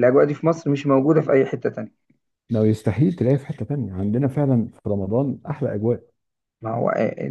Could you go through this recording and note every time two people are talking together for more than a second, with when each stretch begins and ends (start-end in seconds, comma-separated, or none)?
none